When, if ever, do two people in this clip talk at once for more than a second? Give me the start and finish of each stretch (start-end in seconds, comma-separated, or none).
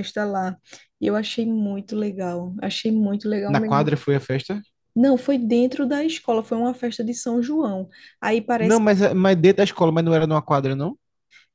none